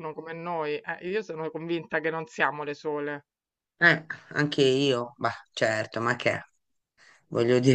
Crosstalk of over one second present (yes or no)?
no